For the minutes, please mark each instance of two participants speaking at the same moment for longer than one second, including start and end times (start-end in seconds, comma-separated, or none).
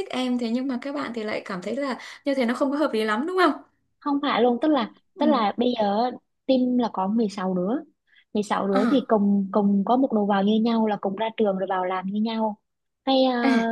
none